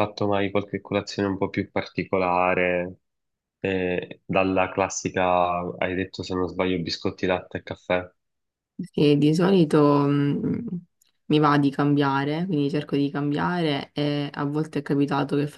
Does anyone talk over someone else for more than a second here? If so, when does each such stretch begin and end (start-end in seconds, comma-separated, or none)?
none